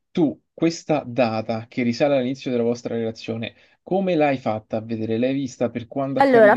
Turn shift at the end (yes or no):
yes